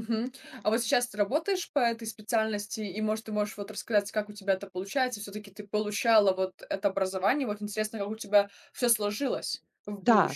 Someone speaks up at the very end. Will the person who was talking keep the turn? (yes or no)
no